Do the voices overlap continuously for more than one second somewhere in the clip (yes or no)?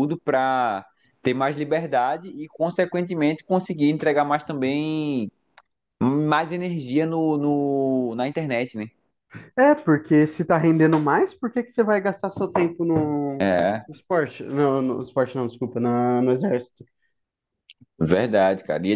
no